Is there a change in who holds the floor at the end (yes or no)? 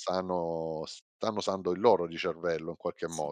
yes